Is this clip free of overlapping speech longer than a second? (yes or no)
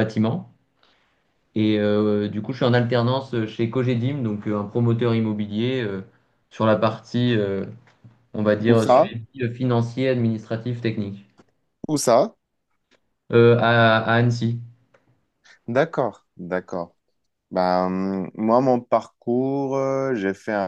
yes